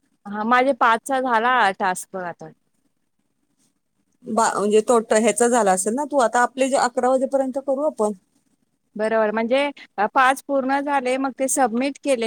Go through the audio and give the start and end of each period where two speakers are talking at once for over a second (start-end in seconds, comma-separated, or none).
none